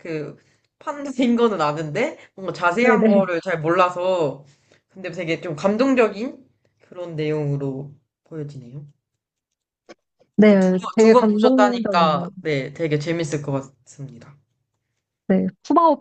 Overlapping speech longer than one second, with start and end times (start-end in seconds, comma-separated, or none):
10.5-12.3